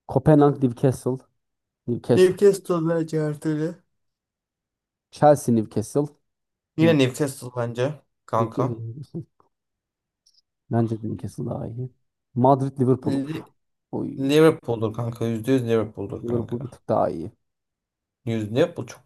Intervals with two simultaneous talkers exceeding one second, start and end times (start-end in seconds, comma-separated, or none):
none